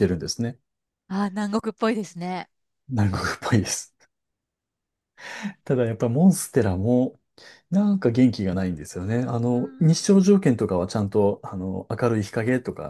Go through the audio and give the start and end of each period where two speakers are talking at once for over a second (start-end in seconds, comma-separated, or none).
none